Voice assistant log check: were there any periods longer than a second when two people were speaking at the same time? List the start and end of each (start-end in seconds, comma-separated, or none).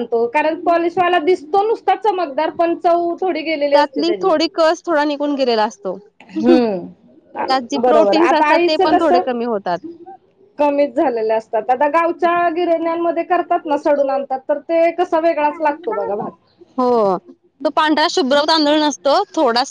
6.5-9.3